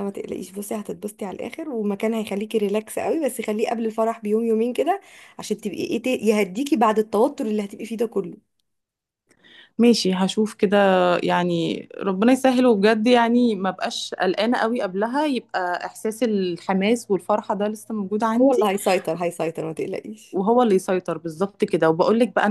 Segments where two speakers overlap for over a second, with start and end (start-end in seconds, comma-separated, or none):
none